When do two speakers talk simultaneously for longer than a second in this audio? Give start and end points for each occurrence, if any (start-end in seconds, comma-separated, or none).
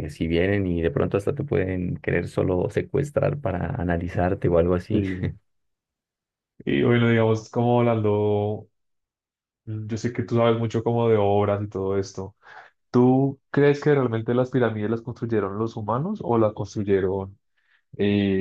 none